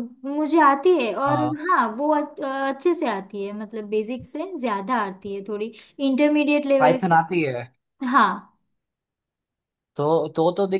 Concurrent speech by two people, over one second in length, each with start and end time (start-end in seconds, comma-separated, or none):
none